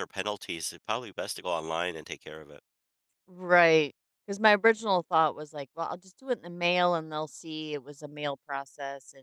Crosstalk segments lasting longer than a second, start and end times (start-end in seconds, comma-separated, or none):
none